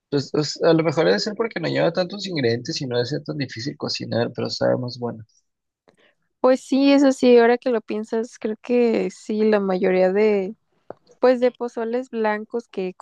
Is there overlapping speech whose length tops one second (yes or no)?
no